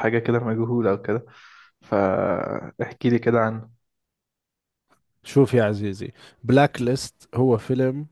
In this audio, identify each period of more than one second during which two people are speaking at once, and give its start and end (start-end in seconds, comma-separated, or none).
none